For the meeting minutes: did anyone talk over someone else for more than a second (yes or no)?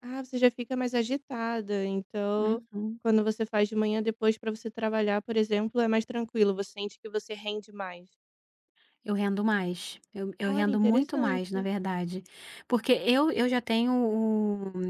yes